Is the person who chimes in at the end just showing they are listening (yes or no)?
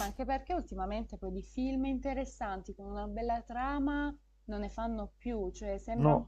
yes